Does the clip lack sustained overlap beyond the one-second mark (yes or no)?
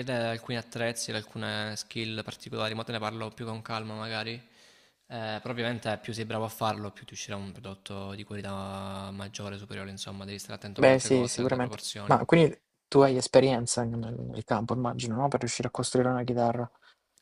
no